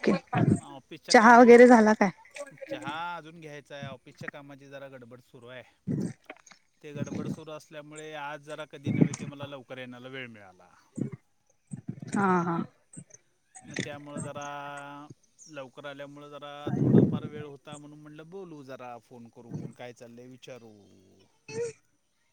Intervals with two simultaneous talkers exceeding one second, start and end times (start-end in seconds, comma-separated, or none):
none